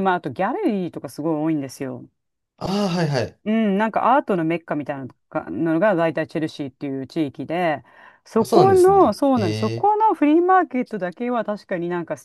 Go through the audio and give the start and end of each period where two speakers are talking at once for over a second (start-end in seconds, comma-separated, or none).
8.4-9.9